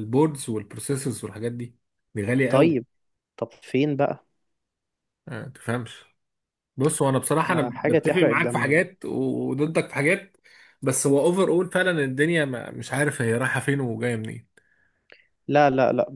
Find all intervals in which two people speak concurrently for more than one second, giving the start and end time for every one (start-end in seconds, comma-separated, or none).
7.5-8.8